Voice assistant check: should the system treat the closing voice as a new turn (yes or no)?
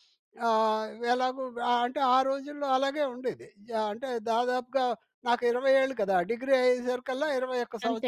no